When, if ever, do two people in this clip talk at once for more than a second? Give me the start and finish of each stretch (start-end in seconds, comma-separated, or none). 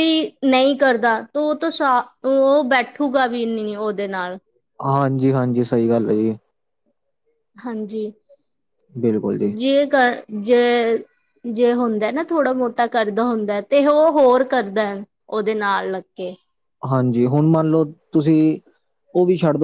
none